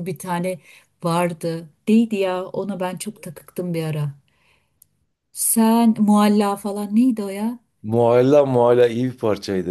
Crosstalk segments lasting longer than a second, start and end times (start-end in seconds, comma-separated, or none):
none